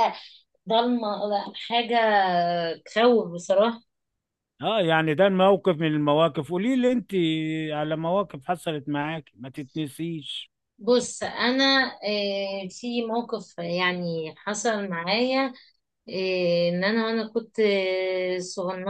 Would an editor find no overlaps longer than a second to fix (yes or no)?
yes